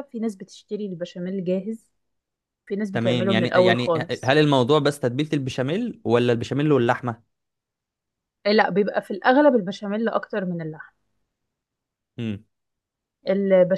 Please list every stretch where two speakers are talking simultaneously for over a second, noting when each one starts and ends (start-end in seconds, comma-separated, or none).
2.9-4.3